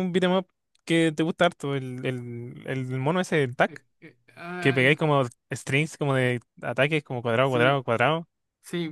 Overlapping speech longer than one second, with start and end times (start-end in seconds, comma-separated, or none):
none